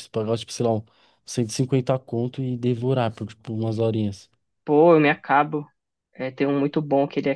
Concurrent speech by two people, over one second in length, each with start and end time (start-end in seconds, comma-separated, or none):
none